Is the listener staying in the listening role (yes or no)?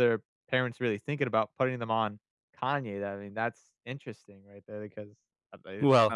no